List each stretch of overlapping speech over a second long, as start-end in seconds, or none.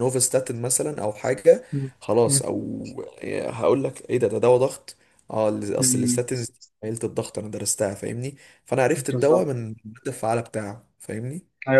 none